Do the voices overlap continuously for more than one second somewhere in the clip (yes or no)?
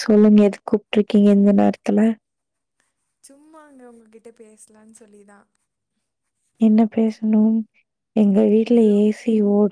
no